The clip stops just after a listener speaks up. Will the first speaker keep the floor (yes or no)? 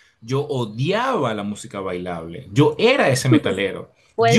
no